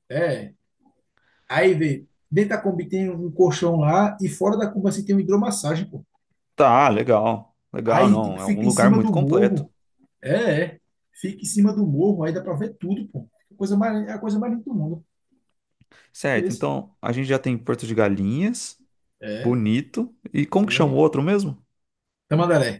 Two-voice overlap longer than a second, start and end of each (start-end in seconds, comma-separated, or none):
7.9-9.7